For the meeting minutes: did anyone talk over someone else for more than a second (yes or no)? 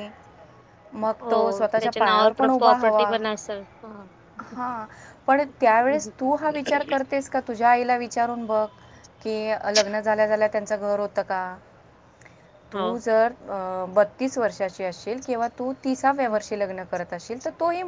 yes